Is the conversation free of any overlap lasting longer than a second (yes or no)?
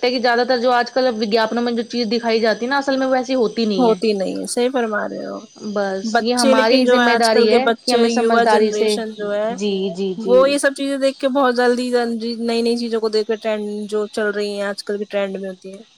no